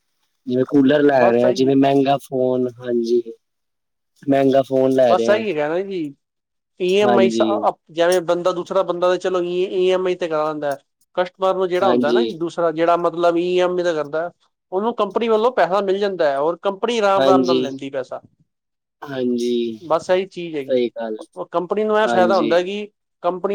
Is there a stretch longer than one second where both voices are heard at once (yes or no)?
no